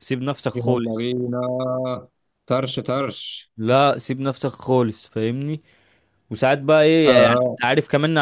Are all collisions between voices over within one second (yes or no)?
yes